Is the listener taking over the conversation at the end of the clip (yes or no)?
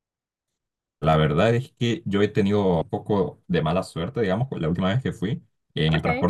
no